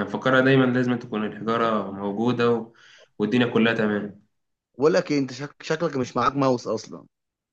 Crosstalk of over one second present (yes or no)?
no